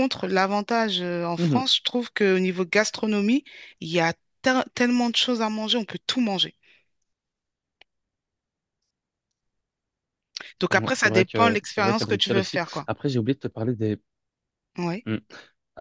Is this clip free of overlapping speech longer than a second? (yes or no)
no